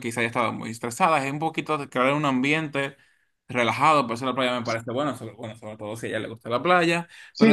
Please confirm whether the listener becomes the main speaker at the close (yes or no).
yes